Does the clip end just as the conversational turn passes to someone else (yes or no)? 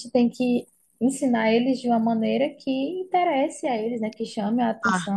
no